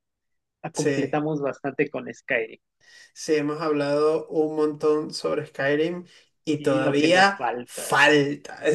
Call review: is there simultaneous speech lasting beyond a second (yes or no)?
yes